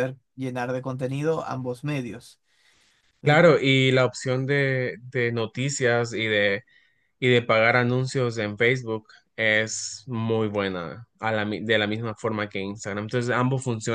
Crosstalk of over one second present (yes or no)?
no